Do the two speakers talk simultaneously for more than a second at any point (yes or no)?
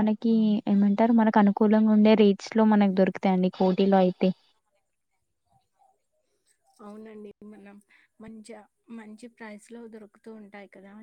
no